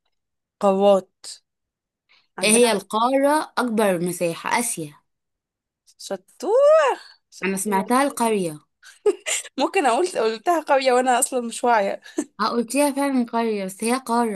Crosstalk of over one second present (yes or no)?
no